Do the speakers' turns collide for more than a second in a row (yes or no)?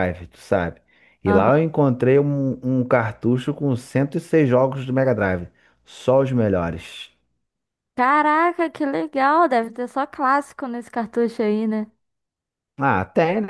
no